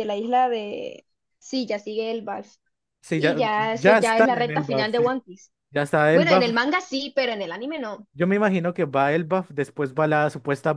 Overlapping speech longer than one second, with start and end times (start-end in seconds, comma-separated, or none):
3.2-5.0